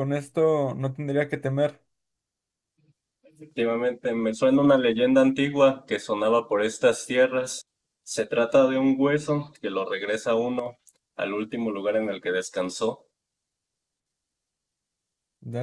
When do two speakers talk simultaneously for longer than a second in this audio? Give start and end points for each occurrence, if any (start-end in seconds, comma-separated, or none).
none